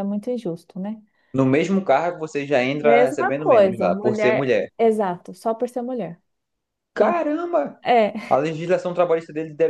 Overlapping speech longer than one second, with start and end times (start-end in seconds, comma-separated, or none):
2.8-4.7